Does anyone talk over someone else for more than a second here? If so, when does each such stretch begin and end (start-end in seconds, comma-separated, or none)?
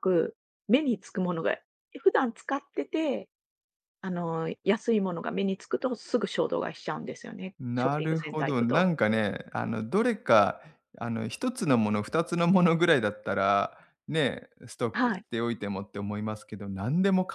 7.6-8.9